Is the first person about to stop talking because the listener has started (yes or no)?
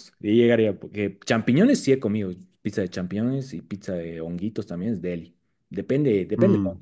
no